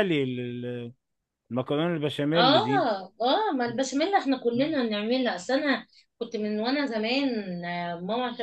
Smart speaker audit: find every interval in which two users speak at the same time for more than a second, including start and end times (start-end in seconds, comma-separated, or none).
none